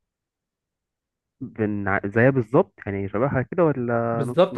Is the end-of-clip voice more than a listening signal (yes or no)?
yes